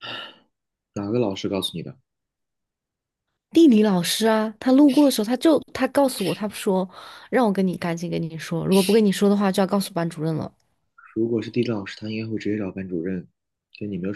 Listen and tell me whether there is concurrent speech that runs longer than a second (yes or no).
no